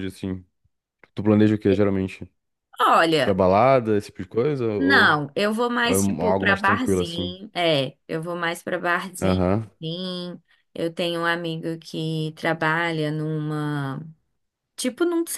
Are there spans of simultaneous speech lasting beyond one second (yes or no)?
yes